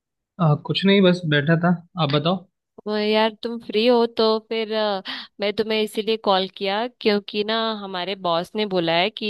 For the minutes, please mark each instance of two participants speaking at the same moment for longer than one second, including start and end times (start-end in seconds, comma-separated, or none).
none